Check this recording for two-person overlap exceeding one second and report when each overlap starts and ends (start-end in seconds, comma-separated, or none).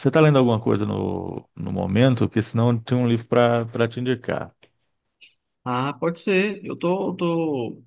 none